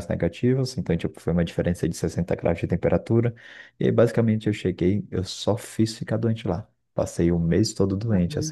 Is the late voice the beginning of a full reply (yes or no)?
no